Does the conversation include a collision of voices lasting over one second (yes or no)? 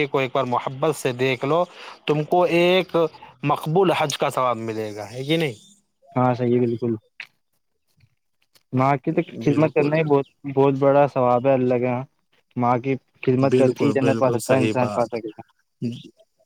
yes